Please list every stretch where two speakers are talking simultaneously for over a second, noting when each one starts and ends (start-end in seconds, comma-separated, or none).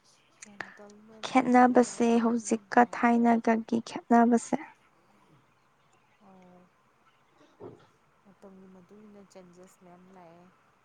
1.2-3.3